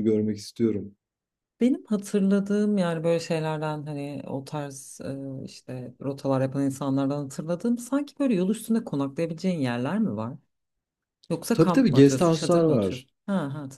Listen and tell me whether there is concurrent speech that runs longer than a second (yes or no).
yes